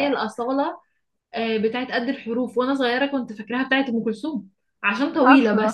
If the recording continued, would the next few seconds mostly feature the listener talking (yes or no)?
no